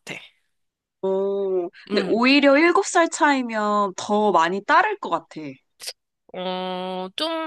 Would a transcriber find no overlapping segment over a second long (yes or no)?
yes